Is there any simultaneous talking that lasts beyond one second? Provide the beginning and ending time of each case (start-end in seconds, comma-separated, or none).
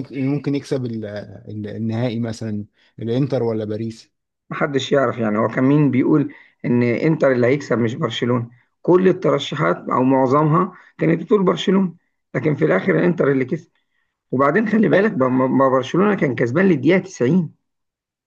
none